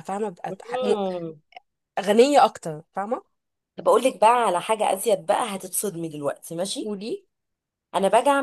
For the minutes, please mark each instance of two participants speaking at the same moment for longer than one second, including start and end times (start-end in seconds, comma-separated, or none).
none